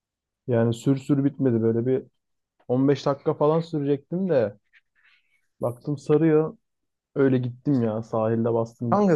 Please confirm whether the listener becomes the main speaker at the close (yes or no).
yes